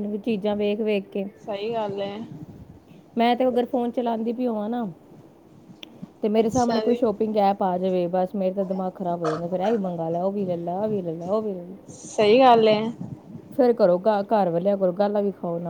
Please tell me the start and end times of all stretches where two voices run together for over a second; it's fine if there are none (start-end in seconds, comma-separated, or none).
none